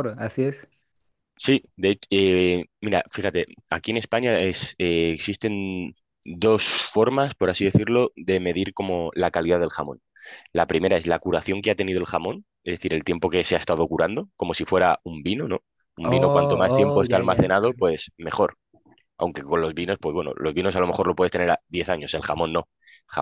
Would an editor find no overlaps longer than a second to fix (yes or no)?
no